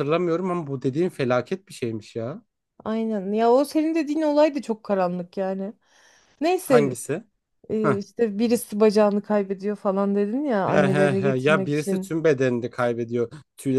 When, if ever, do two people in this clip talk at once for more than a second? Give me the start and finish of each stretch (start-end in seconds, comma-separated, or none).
10.6-12.1